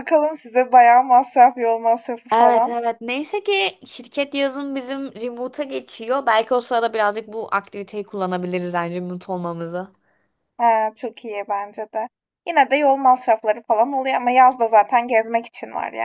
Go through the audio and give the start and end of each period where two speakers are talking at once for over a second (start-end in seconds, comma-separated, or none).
none